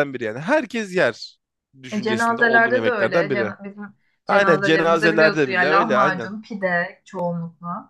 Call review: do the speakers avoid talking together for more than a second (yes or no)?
no